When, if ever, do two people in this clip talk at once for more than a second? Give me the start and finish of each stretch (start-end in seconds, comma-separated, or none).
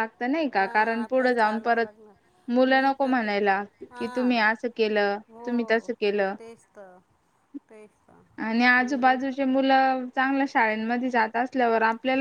0.6-1.9